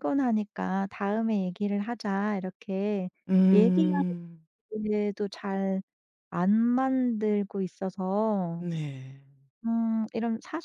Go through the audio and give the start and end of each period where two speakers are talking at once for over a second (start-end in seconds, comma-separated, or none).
none